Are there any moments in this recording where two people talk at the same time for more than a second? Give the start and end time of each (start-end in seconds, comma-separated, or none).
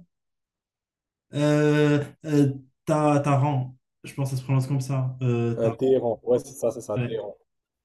none